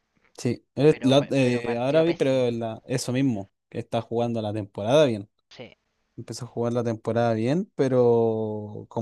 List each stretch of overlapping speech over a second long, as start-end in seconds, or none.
0.9-2.5